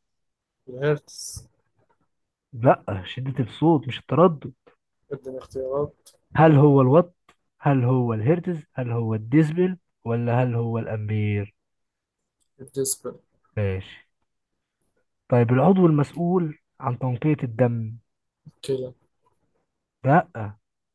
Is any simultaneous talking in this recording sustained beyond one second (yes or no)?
no